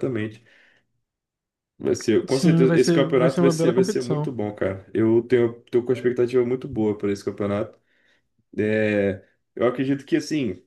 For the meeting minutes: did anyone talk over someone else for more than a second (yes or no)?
yes